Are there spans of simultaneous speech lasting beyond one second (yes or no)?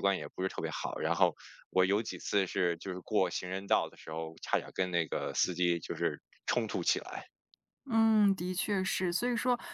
no